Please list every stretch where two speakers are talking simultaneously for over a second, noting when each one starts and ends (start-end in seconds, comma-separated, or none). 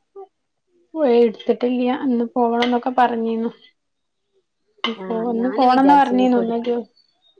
5.0-6.7